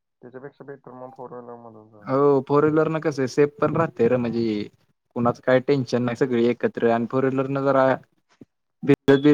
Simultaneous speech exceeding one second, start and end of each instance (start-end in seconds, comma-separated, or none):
none